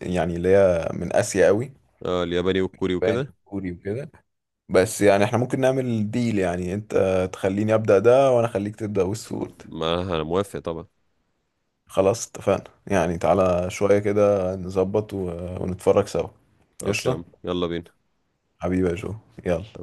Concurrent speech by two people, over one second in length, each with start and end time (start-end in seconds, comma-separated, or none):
none